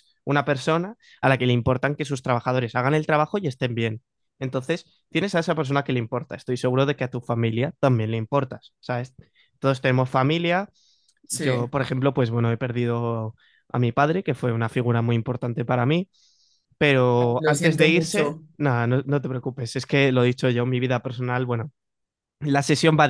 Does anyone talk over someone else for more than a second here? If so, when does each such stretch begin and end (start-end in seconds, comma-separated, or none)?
17.1-18.4